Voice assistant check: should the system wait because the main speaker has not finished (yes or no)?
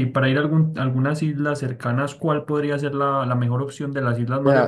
no